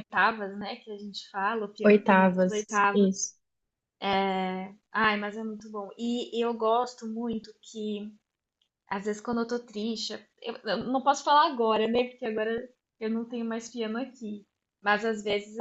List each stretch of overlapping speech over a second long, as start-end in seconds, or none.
1.8-3.1